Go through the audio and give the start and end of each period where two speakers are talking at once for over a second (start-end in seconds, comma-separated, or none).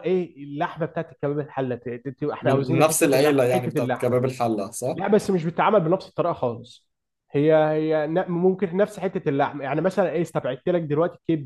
2.4-4.2